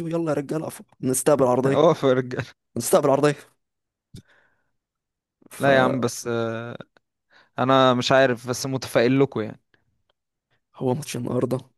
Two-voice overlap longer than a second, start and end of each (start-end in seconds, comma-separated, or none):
none